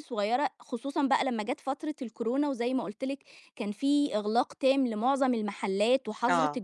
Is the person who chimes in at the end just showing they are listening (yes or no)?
yes